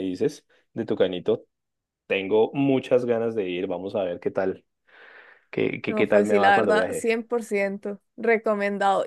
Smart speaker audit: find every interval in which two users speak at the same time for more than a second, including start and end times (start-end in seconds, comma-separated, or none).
5.9-7.1